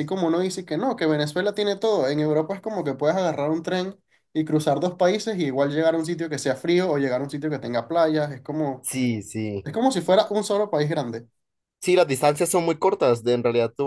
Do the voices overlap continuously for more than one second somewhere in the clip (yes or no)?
no